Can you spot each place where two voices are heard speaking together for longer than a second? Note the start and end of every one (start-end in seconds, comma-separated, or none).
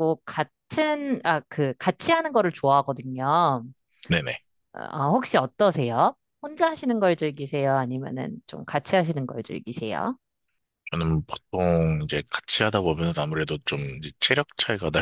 none